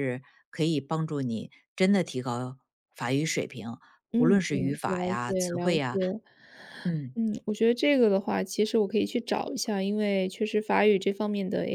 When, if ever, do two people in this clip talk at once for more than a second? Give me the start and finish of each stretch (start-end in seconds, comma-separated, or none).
4.1-6.0